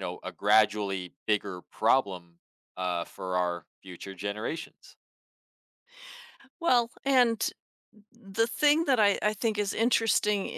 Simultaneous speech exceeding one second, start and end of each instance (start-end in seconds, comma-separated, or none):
none